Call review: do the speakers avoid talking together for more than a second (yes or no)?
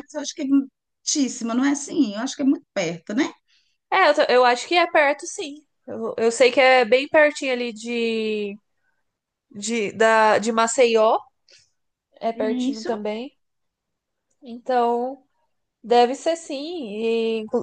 yes